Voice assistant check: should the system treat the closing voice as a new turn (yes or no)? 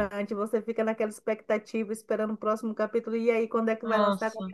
no